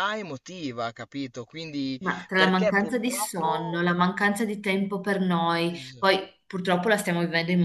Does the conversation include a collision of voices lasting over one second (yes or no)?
yes